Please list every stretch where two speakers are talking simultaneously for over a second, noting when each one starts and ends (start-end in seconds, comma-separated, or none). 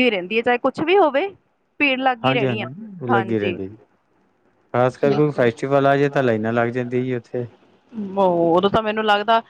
none